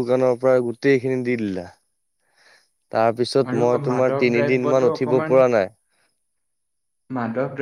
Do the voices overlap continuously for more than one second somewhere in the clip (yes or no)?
yes